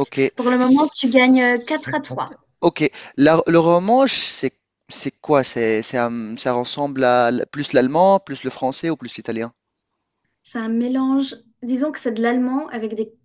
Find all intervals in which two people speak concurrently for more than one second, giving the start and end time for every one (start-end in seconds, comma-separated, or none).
0.6-2.0